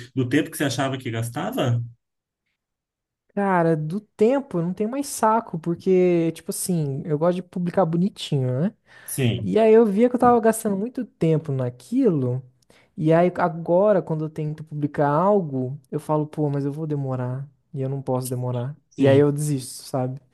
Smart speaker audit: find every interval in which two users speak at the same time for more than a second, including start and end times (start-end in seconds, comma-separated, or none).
none